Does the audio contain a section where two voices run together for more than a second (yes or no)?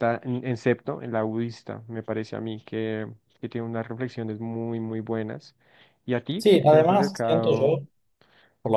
yes